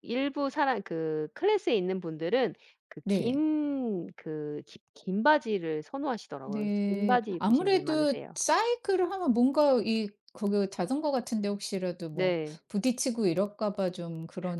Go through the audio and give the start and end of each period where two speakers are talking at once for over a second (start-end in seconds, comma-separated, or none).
6.4-8.4